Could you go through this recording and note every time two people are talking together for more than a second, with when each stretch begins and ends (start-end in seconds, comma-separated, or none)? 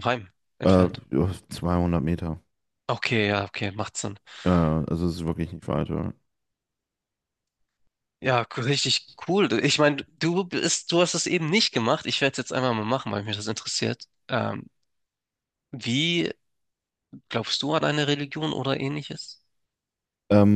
none